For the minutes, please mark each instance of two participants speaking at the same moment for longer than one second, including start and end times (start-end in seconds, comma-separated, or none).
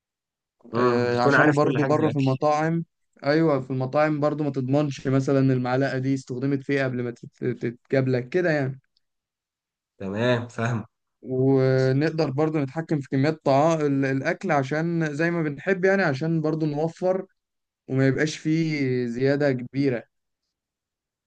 0.7-2.2